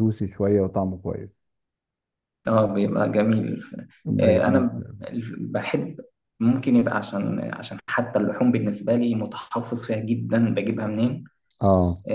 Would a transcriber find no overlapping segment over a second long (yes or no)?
yes